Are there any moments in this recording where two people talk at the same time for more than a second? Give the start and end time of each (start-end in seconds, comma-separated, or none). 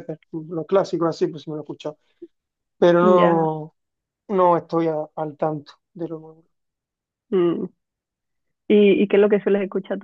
none